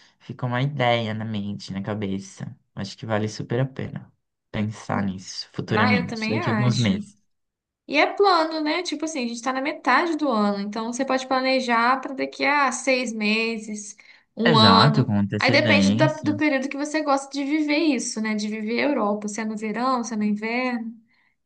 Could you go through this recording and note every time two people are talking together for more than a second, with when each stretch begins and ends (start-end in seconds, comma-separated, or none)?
5.7-7.0, 14.4-16.3